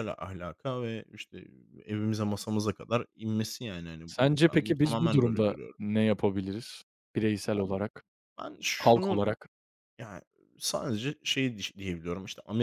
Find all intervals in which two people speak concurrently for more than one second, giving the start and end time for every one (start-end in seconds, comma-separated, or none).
4.1-5.8